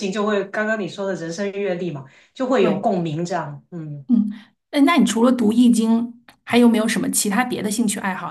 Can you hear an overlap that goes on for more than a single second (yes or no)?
no